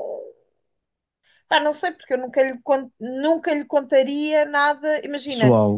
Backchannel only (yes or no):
yes